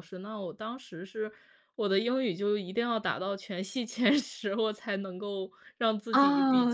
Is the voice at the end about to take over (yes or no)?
yes